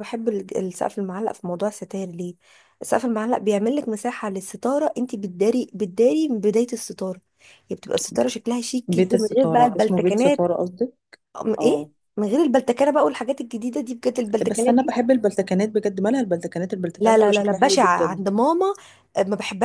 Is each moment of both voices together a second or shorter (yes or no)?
no